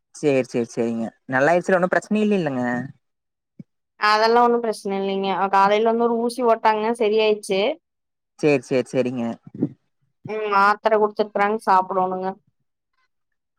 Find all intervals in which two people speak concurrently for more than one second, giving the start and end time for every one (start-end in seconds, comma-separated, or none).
none